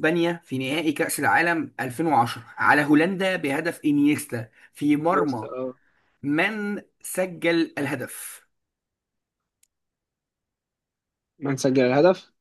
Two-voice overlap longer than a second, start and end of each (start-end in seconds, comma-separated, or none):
none